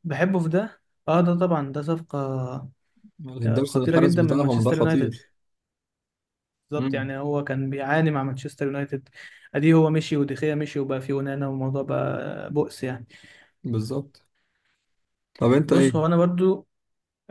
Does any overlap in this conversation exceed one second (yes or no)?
yes